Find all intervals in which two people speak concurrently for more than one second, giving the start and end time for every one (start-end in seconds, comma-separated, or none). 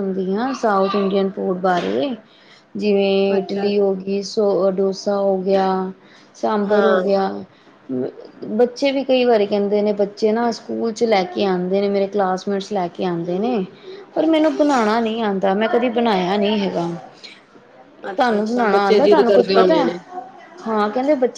18.2-19.9